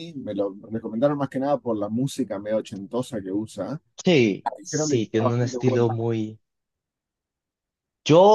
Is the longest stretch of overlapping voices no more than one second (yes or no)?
no